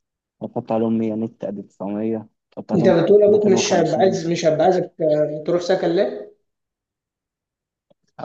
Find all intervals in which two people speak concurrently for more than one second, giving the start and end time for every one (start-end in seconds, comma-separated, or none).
2.7-4.3